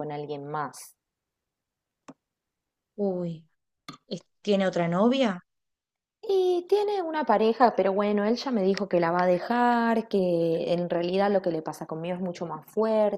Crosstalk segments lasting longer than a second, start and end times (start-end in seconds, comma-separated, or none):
none